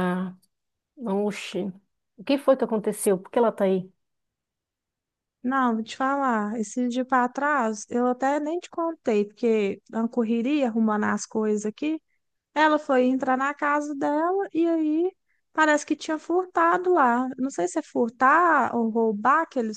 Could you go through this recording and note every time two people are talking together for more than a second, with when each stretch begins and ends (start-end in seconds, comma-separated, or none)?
none